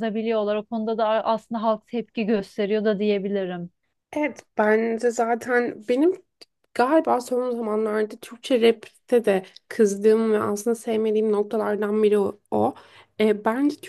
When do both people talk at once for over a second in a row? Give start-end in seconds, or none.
none